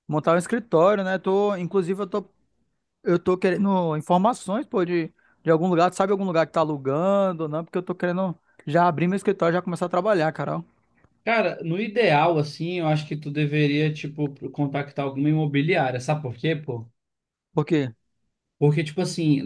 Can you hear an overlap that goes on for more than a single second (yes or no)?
no